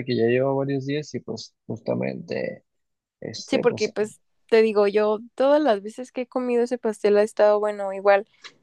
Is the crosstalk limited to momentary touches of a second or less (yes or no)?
yes